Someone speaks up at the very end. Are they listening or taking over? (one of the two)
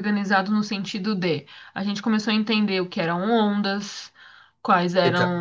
listening